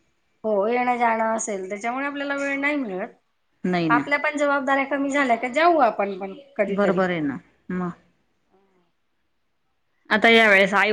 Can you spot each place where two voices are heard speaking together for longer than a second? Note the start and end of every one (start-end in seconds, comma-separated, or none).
none